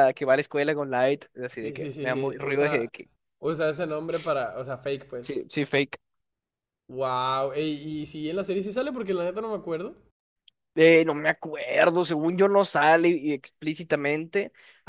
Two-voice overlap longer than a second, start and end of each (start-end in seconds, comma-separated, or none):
1.5-2.9